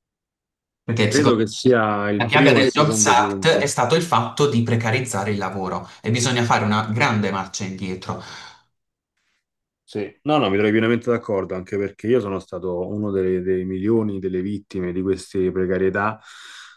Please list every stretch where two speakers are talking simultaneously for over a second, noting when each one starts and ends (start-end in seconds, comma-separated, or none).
2.2-3.7